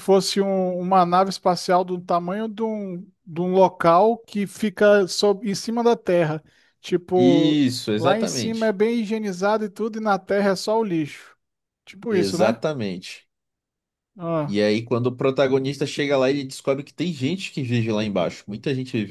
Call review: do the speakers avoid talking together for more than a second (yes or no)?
no